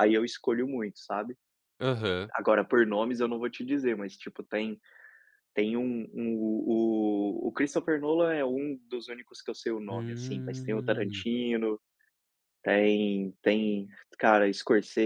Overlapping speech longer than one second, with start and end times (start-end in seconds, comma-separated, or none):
9.9-11.2